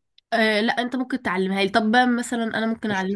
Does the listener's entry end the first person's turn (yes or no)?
no